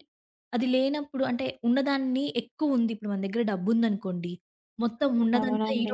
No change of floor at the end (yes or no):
yes